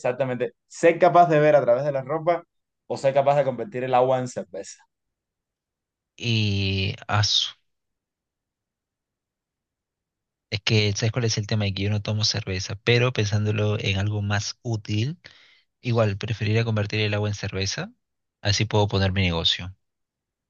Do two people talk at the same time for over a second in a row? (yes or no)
no